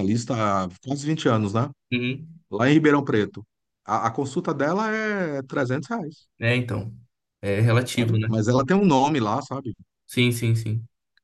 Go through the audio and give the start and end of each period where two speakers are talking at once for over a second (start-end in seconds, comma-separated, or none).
none